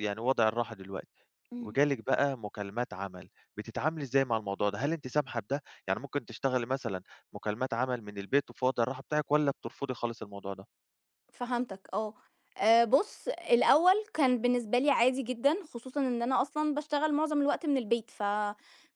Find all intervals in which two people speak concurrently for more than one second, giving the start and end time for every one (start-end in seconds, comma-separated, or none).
none